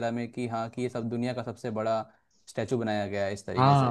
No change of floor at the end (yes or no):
no